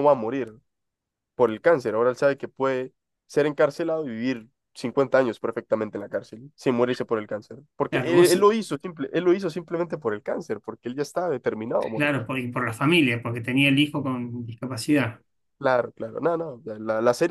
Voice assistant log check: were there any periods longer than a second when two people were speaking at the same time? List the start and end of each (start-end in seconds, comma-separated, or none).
none